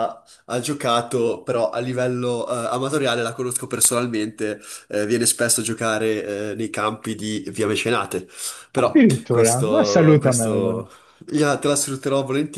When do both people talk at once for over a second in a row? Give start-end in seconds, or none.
8.8-10.8